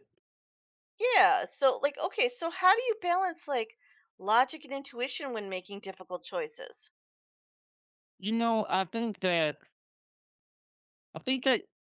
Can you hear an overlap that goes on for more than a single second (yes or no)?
no